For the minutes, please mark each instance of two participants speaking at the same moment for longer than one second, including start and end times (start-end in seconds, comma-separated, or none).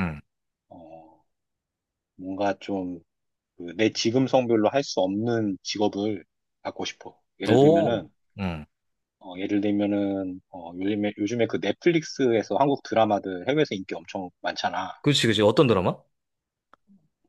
none